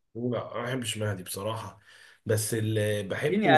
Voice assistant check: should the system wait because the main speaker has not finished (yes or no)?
no